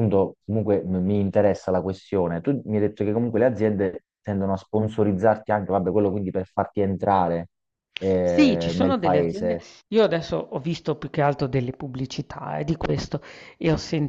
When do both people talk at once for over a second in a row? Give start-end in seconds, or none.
8.2-9.6